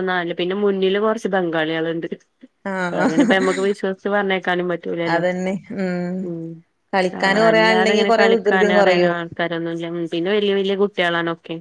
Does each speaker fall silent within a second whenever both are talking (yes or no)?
no